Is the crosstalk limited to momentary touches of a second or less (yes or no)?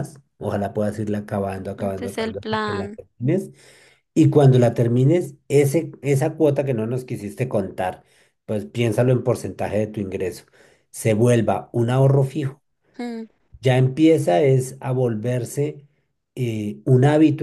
no